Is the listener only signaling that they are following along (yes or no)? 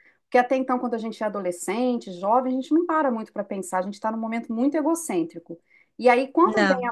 yes